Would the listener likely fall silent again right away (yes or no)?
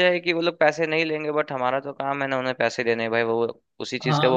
no